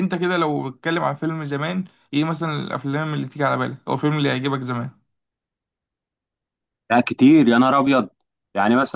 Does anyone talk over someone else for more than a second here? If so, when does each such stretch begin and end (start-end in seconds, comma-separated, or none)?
none